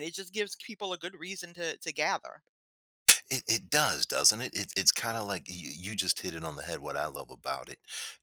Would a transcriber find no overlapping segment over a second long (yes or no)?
yes